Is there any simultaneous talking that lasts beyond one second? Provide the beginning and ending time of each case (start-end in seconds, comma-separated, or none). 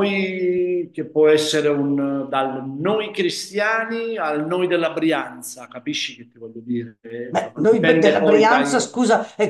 7.3-8.8